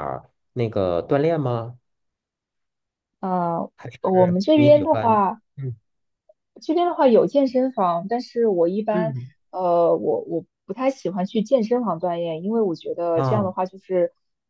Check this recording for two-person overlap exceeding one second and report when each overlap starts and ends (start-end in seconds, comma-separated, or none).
3.8-5.2